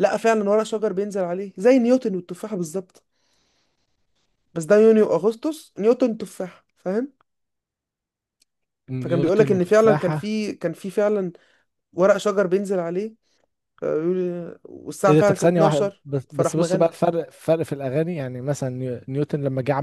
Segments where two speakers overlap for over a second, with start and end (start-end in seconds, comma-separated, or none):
9.0-10.3, 15.1-16.9